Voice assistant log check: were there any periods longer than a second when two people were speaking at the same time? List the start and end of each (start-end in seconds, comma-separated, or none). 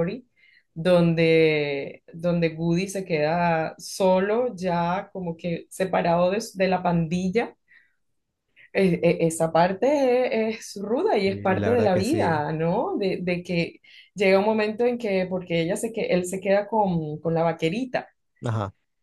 11.2-12.5